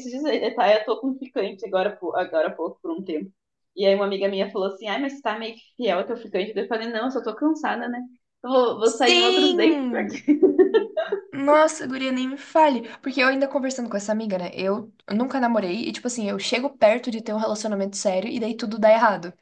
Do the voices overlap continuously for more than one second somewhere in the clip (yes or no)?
yes